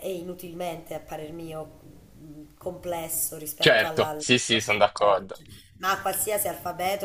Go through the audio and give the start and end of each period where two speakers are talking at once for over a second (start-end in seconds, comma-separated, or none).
3.6-5.2